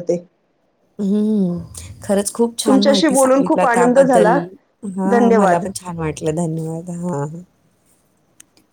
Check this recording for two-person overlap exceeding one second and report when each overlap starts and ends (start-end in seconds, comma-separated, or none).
2.7-4.4